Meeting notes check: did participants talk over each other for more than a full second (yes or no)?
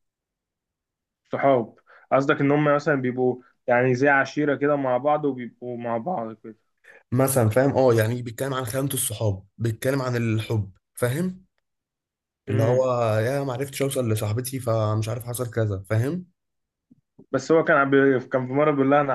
no